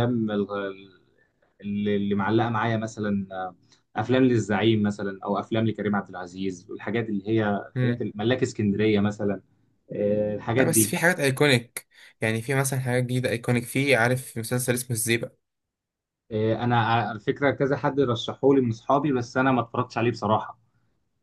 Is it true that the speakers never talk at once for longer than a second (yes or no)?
yes